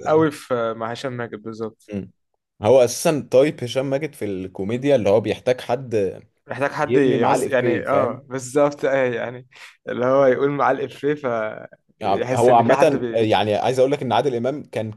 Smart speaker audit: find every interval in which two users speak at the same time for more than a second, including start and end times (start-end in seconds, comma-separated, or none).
6.8-8.2, 12.0-13.3